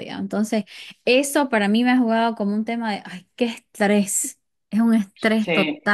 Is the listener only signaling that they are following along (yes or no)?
yes